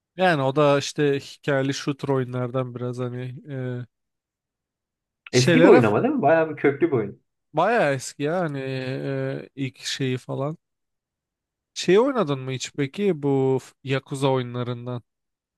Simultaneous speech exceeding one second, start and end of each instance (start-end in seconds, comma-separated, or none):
none